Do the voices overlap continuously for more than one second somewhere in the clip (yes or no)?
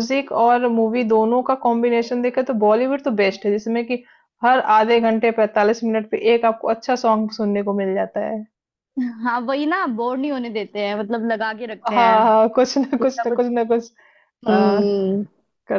no